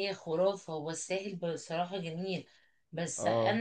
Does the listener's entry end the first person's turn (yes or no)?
no